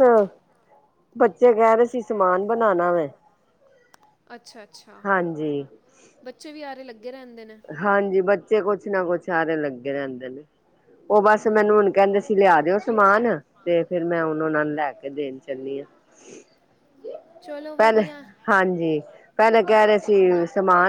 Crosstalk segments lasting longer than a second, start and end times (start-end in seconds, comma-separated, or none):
none